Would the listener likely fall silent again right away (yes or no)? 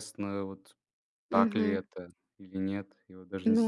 no